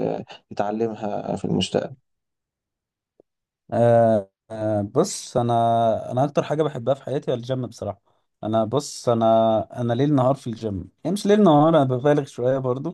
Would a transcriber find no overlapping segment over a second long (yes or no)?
yes